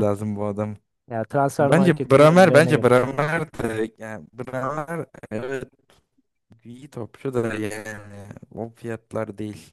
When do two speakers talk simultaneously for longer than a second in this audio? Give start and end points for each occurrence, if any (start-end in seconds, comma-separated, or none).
1.6-2.9